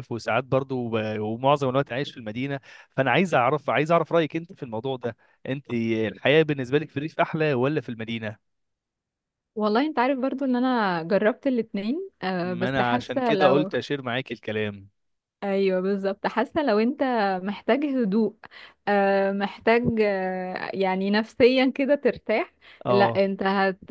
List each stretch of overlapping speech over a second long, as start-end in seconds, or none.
12.4-13.7